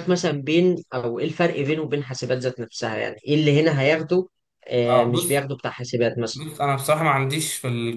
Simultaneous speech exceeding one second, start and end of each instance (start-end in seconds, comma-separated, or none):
none